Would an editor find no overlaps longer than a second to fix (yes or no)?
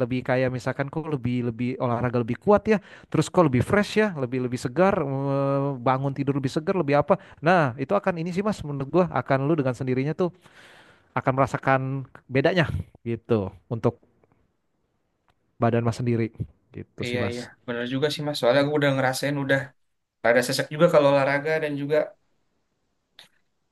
yes